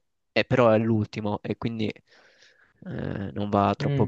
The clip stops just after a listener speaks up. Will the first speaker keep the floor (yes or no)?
no